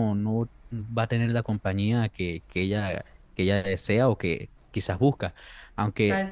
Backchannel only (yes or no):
yes